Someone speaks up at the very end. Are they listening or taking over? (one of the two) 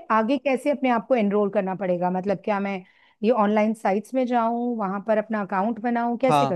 taking over